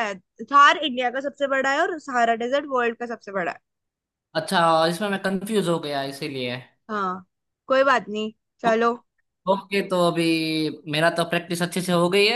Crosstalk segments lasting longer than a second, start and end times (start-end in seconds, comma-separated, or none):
none